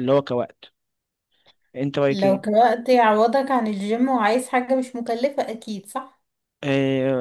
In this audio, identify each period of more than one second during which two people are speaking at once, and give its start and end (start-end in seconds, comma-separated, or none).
none